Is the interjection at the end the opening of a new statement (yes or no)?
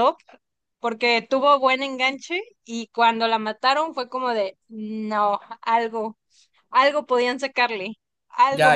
yes